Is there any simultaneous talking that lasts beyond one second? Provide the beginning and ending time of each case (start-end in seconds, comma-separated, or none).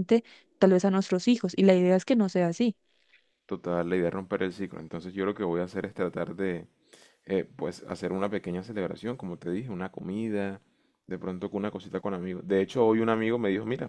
none